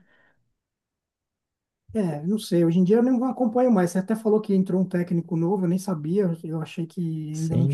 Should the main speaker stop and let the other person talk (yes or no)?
yes